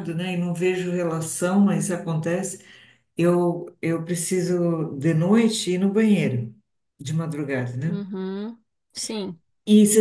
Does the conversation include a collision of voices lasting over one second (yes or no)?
no